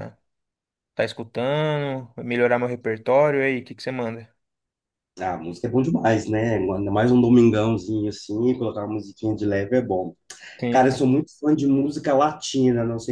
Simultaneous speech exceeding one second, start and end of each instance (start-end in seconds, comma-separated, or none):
none